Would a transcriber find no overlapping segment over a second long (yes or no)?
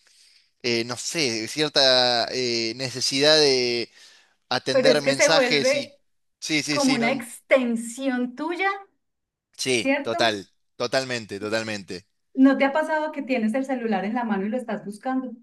no